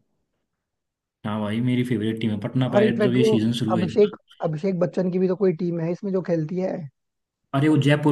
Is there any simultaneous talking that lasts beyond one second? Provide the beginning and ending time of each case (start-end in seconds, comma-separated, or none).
2.7-4.1